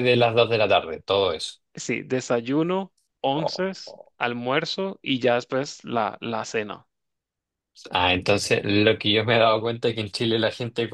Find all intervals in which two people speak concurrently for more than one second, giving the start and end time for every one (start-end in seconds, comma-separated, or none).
none